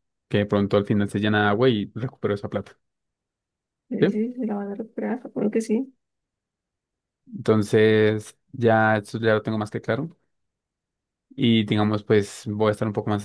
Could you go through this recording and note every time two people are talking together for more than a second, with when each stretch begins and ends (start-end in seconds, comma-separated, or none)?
none